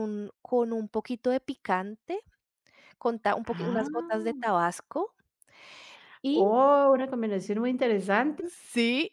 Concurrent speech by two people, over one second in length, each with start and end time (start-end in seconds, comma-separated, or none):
none